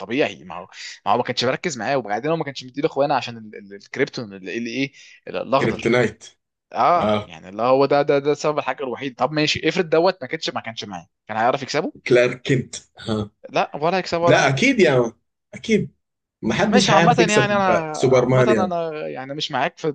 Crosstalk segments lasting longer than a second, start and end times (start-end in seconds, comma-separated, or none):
16.7-18.7